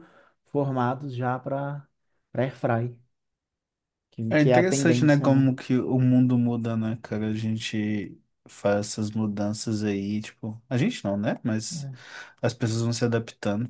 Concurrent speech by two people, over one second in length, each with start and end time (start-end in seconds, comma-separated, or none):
4.3-5.5